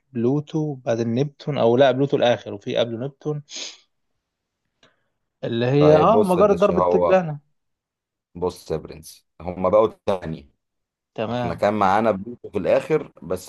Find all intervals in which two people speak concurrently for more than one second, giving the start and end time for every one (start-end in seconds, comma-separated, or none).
5.8-7.2